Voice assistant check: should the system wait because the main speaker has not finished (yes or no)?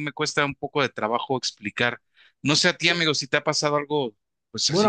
no